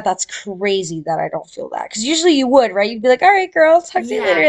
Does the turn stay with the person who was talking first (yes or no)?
no